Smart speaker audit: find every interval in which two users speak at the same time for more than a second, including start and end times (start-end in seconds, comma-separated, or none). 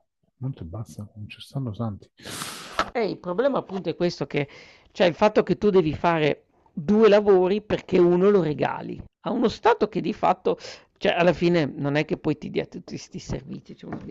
none